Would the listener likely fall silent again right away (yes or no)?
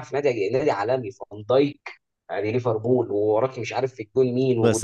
no